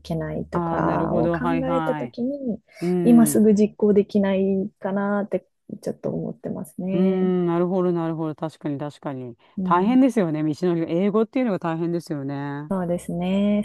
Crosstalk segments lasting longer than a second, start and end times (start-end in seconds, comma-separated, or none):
0.5-2.2